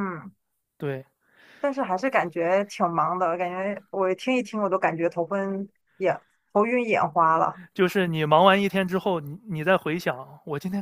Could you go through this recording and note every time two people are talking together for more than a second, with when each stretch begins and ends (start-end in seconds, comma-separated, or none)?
none